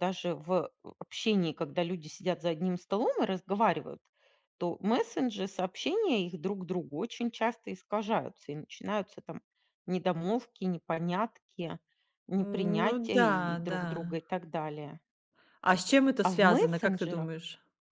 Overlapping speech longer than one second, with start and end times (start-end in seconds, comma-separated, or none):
12.4-14.2, 16.2-17.4